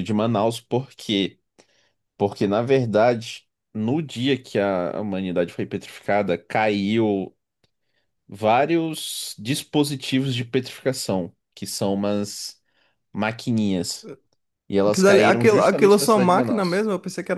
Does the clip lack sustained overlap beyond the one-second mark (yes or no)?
no